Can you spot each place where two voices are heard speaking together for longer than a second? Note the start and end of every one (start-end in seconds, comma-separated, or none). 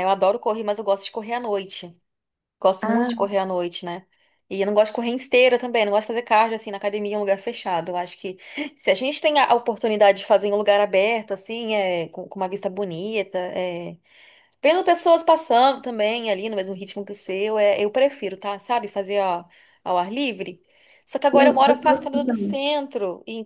21.3-22.6